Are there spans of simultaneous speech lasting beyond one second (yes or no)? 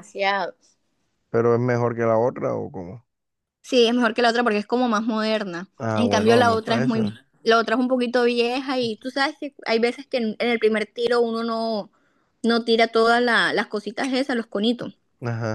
yes